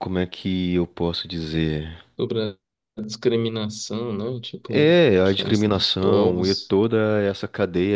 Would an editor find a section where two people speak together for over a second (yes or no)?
yes